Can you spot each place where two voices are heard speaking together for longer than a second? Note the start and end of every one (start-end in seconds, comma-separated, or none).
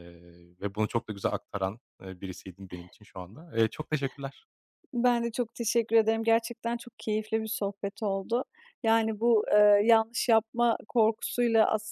none